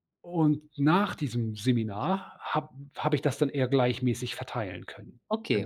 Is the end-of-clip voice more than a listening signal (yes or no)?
yes